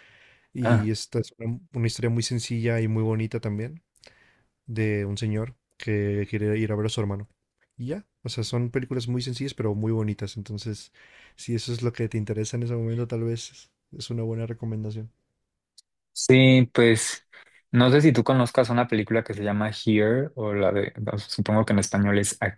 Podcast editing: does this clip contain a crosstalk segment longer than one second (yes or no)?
no